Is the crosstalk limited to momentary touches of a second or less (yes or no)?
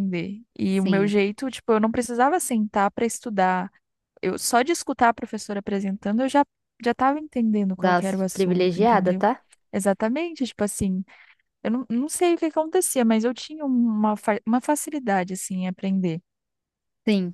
no